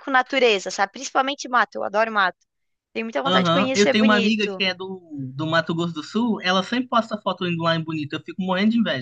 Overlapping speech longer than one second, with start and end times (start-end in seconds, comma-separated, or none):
3.2-4.6